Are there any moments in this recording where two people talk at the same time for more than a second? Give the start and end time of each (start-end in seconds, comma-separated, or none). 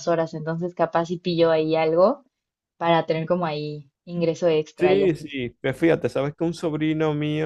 none